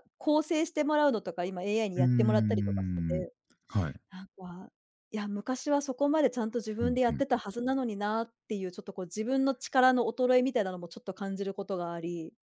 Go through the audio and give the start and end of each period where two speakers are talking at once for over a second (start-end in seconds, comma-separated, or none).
1.9-3.3